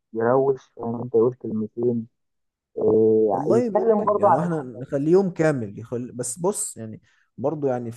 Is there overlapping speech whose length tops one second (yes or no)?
yes